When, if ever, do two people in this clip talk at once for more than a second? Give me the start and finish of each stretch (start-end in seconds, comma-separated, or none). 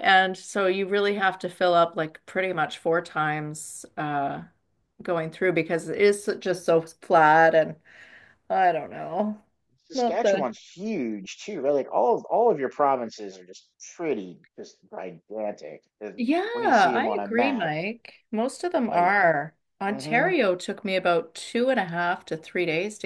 16.2-17.7